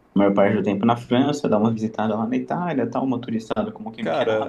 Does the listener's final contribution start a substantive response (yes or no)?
yes